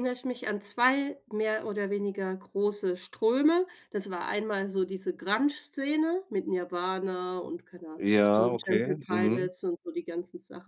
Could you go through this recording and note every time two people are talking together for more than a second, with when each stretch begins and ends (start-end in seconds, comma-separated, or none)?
8.0-9.5